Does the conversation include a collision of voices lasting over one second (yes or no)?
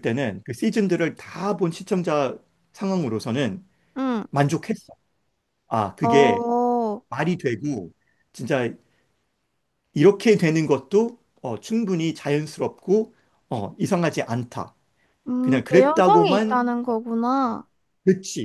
yes